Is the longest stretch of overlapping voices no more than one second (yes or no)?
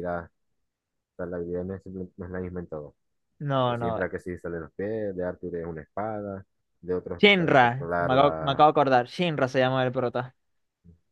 no